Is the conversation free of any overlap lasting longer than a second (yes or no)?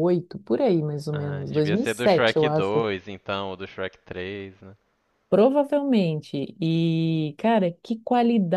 no